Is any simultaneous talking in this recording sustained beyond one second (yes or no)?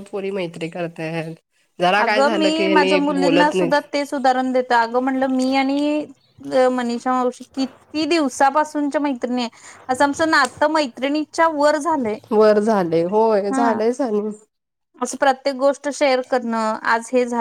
no